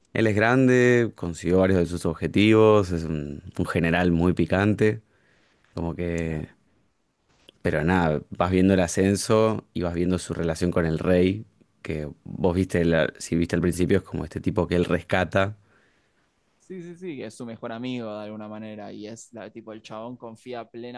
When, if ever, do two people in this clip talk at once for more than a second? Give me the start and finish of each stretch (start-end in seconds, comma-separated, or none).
none